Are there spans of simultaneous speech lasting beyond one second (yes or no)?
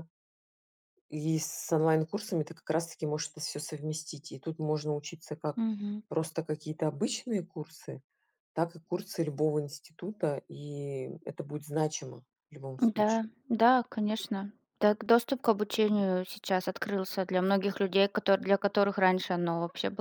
no